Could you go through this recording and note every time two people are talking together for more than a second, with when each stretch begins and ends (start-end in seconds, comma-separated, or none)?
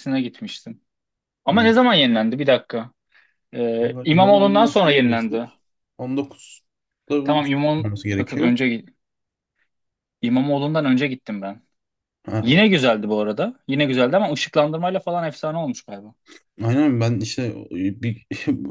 3.8-5.5